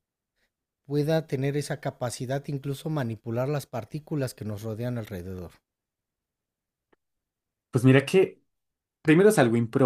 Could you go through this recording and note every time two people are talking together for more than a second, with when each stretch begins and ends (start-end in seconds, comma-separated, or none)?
none